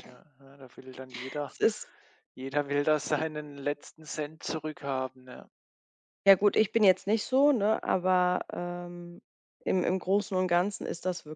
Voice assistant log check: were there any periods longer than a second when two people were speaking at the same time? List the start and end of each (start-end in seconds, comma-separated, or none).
none